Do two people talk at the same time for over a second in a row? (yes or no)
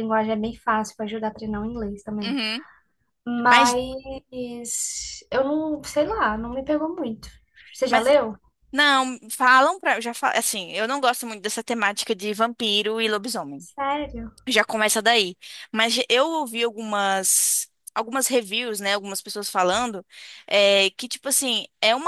no